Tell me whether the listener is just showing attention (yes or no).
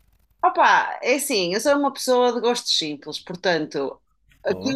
yes